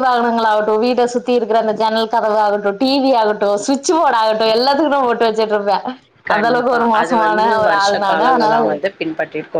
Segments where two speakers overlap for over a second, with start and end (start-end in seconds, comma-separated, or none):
6.3-8.6